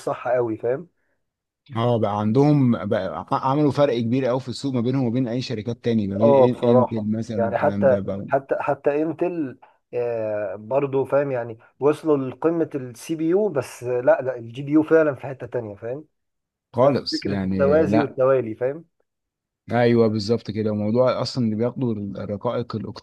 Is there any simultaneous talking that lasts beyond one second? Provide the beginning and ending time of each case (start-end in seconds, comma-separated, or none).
6.2-8.3, 16.8-18.2